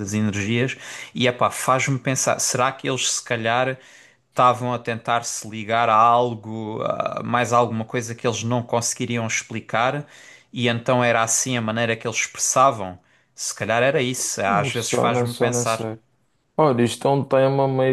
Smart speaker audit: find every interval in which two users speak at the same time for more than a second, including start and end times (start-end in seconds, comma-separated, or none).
14.4-15.9